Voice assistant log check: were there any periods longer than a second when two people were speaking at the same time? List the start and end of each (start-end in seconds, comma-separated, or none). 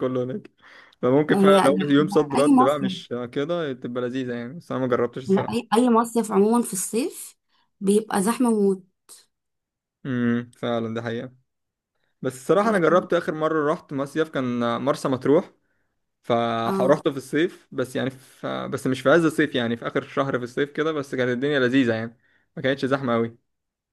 1.3-2.9